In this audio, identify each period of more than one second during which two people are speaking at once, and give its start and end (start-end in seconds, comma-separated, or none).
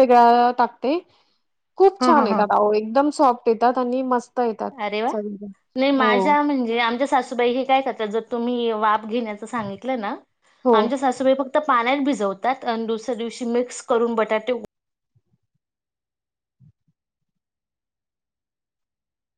none